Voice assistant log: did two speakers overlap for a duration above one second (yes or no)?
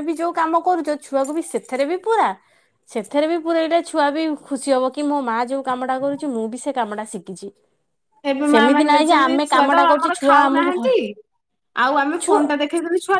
yes